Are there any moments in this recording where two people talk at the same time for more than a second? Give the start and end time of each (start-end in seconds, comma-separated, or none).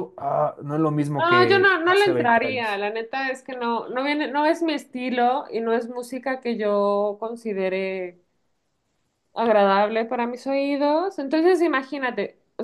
1.2-2.8